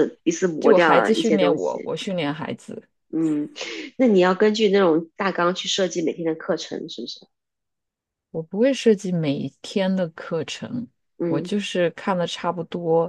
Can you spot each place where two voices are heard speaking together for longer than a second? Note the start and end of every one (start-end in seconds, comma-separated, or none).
0.6-1.9